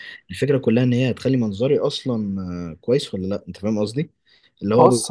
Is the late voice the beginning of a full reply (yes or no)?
no